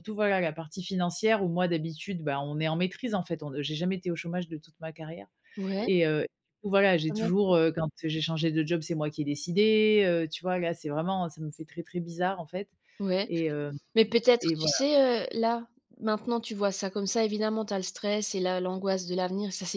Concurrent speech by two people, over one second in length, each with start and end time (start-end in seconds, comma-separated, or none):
none